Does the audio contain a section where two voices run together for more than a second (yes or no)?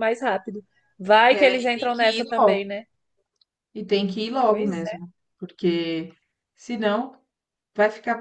yes